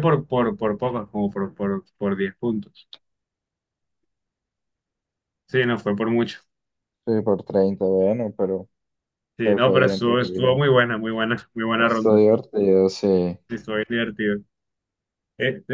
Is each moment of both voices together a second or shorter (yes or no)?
no